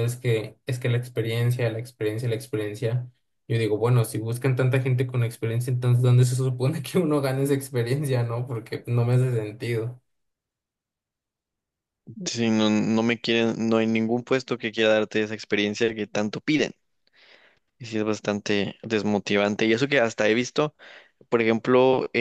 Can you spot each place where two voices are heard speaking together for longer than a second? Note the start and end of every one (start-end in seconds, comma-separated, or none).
none